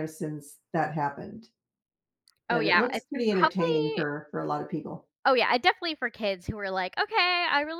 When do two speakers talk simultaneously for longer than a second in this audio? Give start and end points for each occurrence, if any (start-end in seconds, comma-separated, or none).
2.5-4.0